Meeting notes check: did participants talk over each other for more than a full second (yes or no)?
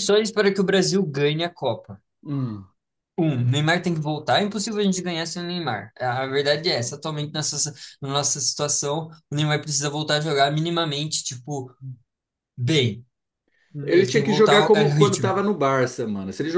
yes